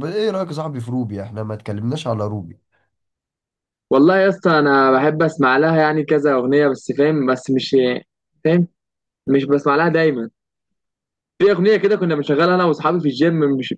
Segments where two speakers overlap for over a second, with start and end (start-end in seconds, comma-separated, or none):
none